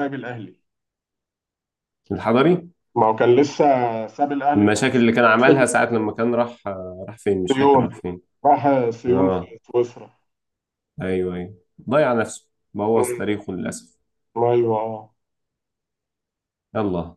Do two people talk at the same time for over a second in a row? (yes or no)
no